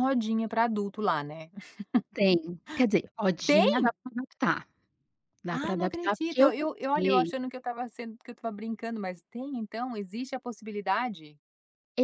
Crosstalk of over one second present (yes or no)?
yes